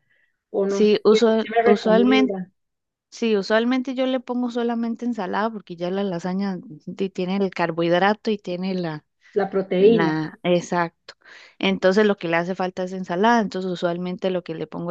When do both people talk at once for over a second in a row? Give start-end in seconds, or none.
0.7-2.4